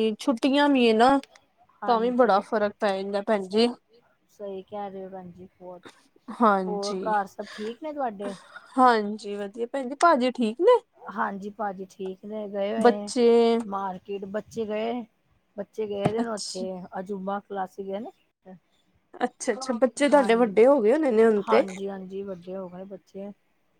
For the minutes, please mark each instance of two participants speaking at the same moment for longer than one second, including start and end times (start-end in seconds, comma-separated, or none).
none